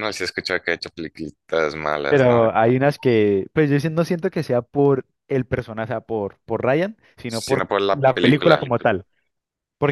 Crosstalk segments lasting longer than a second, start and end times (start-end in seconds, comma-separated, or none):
7.3-8.7